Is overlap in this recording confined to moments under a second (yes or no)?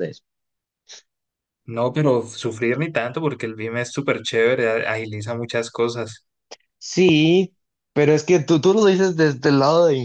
yes